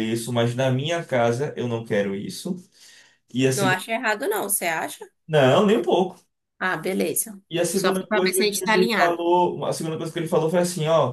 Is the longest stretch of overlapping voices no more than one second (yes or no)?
no